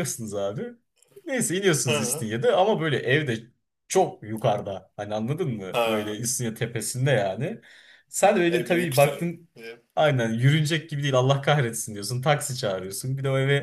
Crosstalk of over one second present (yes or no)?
yes